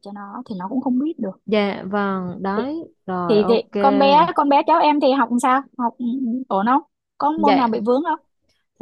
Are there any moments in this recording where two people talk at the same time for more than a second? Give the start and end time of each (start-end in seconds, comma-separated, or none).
none